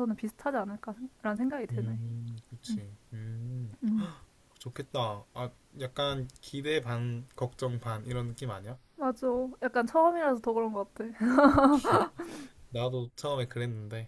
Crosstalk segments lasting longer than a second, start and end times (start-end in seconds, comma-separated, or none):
none